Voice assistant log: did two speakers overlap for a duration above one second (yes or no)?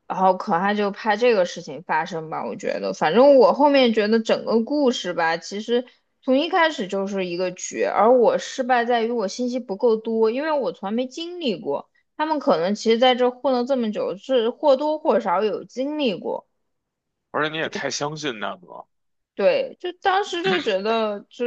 no